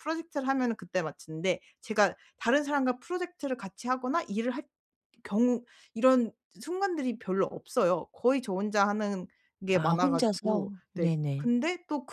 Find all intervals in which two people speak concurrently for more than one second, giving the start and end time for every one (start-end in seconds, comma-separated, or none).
9.7-11.5